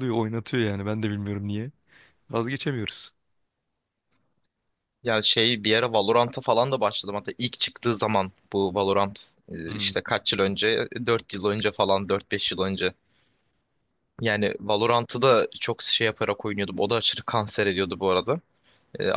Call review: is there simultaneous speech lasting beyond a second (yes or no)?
no